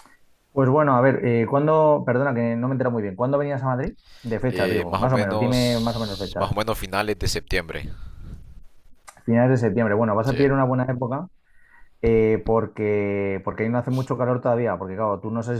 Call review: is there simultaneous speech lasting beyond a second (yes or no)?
yes